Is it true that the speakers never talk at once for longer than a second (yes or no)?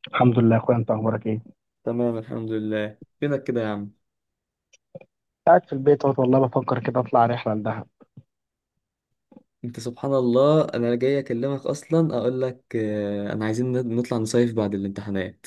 yes